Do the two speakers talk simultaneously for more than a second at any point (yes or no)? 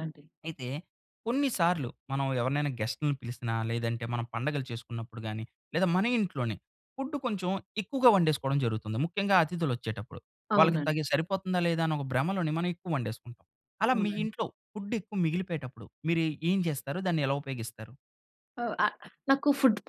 no